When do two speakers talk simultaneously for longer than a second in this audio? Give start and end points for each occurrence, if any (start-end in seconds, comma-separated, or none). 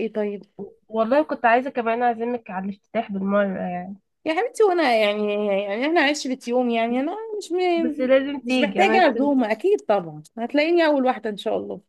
7.8-9.3